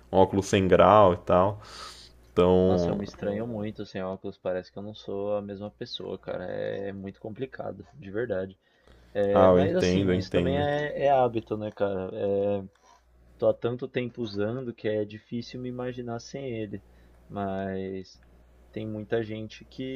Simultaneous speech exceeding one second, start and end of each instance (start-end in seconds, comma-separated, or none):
9.3-10.7